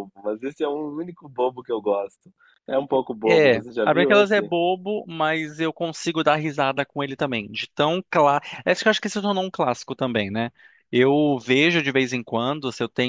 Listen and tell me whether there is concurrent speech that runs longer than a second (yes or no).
yes